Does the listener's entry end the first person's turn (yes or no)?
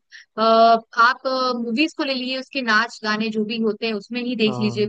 no